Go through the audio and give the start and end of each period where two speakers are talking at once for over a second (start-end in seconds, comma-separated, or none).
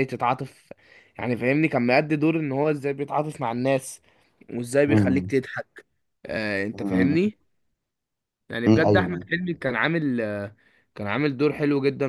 none